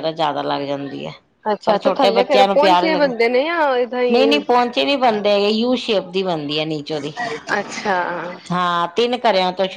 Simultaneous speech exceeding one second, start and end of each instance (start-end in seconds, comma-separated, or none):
1.6-3.0